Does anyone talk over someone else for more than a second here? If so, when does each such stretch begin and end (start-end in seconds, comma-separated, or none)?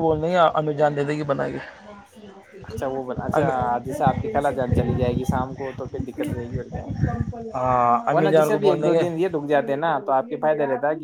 7.5-9.1